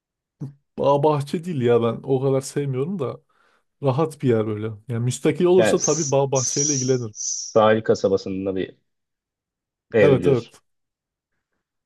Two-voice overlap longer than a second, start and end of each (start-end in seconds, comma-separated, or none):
5.6-7.1